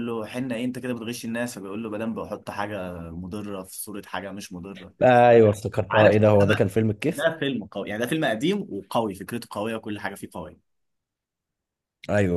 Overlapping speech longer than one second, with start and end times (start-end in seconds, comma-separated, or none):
none